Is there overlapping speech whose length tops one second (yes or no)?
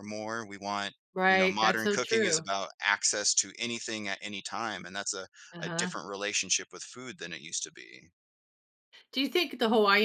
yes